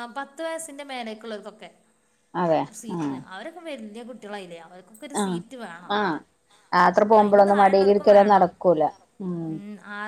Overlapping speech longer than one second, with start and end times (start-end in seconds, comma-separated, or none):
7.2-8.5